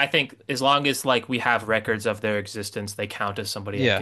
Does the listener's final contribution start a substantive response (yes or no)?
yes